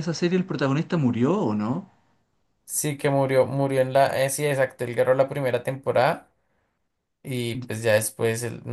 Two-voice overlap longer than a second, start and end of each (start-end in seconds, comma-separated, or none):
none